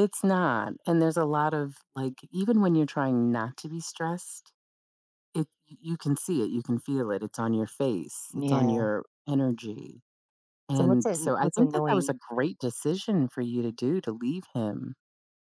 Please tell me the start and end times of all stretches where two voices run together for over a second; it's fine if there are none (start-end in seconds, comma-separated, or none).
10.7-12.1